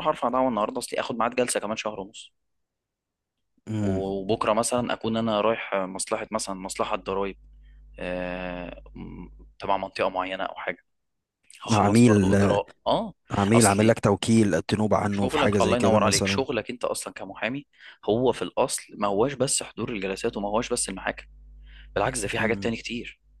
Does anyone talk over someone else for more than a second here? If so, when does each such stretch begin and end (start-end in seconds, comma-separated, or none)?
15.1-16.5